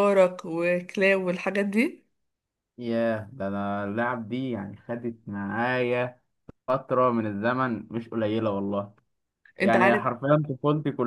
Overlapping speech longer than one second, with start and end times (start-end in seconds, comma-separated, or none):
none